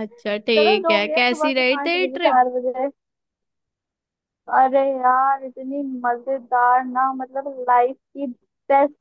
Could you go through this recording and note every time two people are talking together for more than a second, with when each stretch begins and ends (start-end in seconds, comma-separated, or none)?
0.6-2.4